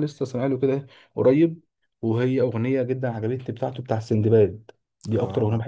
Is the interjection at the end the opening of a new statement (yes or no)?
no